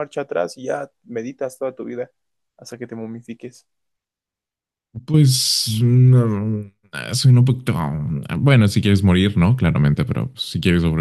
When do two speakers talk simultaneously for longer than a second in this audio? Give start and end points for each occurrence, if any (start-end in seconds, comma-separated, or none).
none